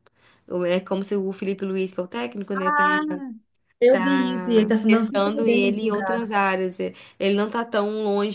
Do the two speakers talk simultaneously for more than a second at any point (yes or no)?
yes